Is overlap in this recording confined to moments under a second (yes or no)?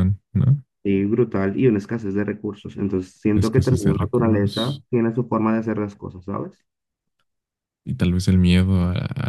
no